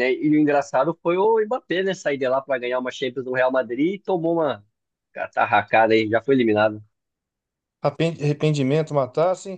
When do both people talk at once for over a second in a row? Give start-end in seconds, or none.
none